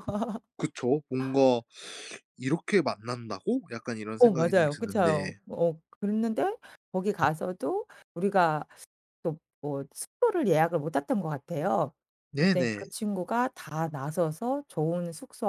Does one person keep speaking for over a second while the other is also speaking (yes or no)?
yes